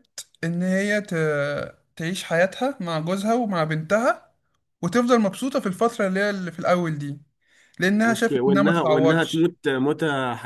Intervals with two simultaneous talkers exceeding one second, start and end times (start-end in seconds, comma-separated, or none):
8.0-9.5